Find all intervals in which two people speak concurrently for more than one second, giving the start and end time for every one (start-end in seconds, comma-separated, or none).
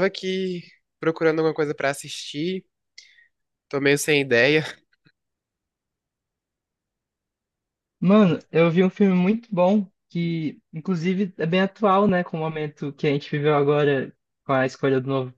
none